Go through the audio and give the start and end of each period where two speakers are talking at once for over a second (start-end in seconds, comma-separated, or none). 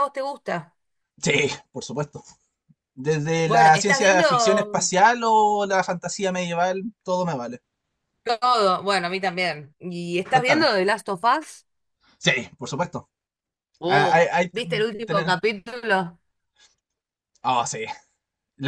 3.5-4.8, 13.8-15.3